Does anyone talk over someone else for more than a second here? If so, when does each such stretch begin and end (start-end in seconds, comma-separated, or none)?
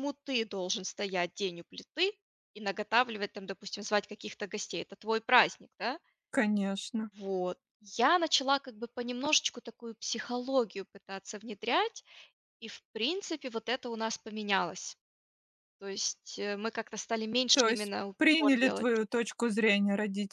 17.5-18.9